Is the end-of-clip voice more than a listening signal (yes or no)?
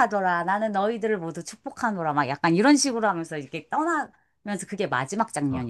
yes